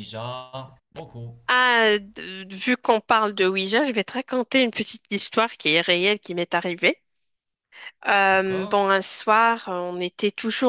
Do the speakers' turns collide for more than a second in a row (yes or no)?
no